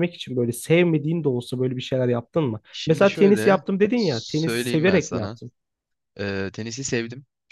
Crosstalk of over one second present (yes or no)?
yes